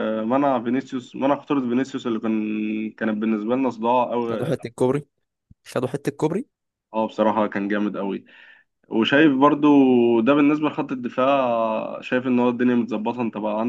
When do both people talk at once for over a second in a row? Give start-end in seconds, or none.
none